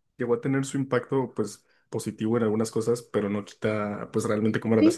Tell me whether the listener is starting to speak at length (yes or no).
yes